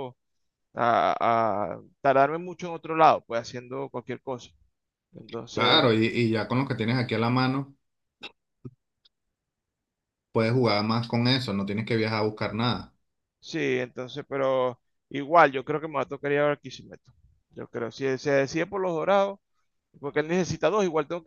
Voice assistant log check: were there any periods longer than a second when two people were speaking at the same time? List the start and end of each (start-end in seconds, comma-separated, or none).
none